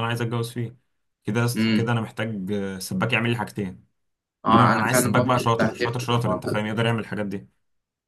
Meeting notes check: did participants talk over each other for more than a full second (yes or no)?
yes